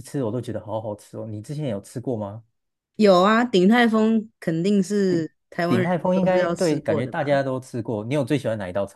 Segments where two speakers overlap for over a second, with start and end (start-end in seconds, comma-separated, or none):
5.7-7.3